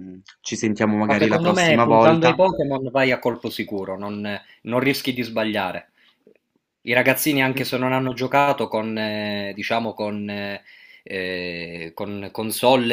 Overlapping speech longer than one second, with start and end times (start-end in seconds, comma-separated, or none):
1.1-2.4